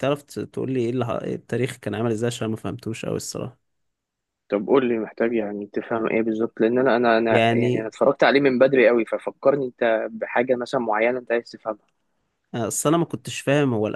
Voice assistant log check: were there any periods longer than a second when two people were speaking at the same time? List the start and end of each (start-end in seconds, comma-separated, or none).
none